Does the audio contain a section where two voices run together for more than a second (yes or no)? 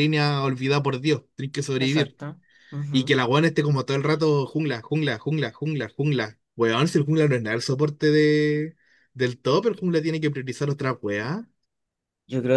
no